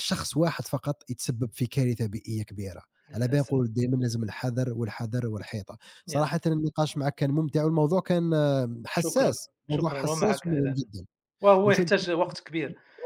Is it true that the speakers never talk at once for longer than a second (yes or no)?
no